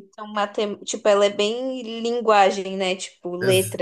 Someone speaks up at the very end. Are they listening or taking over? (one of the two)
taking over